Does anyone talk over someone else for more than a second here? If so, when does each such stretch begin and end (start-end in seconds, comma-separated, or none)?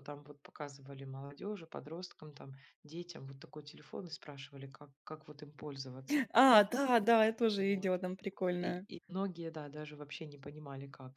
none